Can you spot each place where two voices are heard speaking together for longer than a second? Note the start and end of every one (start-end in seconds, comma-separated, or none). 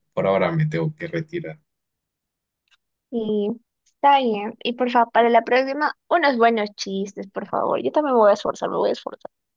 none